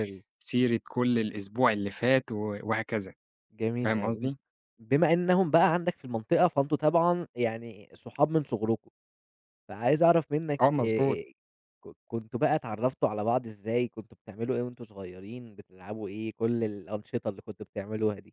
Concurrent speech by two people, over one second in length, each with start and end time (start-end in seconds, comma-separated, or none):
none